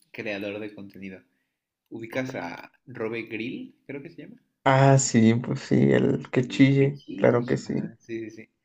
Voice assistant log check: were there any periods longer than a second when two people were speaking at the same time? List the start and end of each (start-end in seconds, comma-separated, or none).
6.0-7.9